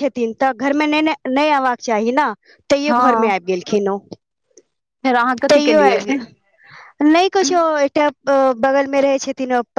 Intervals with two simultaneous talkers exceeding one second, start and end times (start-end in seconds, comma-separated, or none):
none